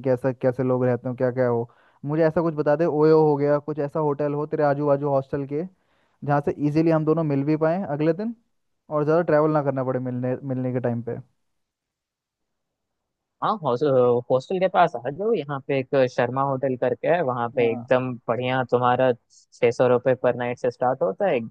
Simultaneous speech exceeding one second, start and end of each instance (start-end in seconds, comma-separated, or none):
none